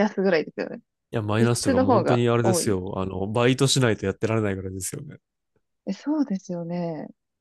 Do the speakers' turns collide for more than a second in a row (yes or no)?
yes